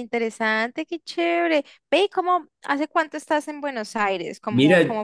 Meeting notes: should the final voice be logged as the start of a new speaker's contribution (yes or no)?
yes